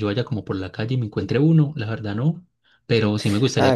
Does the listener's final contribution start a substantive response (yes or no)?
no